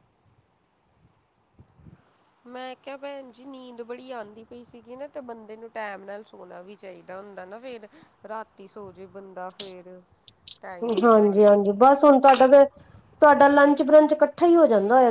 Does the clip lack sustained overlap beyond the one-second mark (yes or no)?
yes